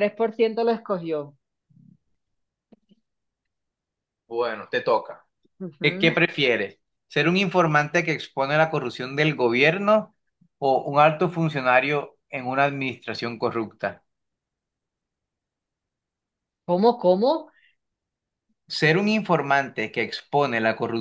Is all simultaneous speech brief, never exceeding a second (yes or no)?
yes